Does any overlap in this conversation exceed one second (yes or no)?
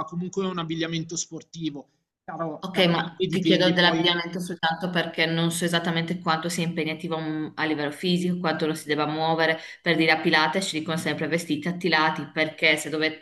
yes